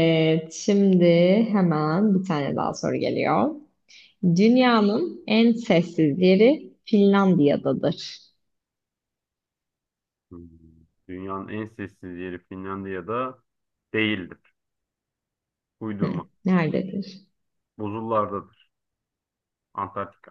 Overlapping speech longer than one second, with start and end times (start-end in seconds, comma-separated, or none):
none